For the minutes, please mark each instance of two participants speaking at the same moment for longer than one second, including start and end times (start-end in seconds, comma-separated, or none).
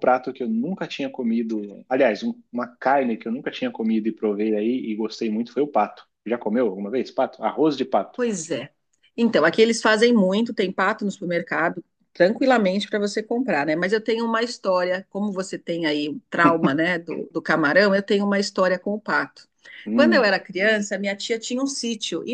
none